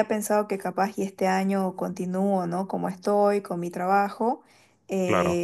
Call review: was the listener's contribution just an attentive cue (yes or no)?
yes